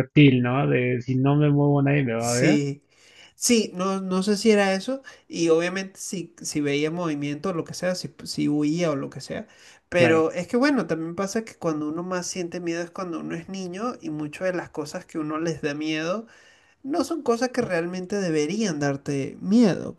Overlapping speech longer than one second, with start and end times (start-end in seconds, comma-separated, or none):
none